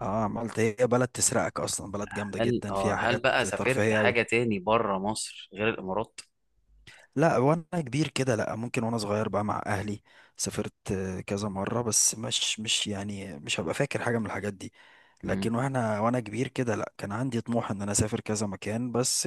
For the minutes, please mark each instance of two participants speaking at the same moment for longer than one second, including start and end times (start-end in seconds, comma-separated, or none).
2.4-4.2